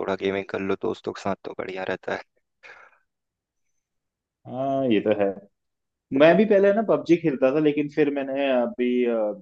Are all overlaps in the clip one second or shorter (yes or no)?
yes